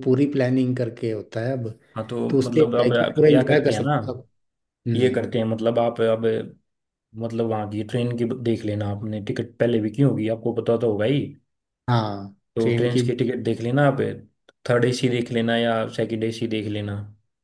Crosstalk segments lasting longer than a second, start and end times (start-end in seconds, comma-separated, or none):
2.3-3.9